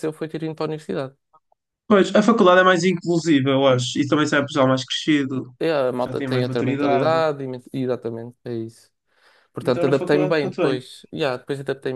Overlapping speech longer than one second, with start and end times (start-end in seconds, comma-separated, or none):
6.0-7.2, 9.6-10.8